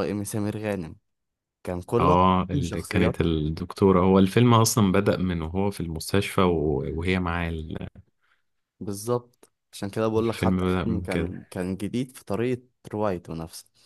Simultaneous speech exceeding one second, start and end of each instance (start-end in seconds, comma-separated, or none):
2.0-3.3, 10.2-11.4